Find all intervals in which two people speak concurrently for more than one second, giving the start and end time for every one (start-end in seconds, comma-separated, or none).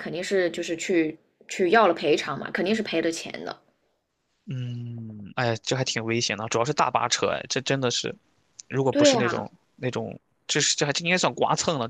none